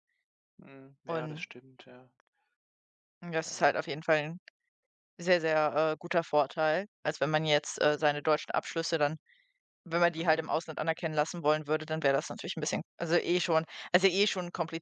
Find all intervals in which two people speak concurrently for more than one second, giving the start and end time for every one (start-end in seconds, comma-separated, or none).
none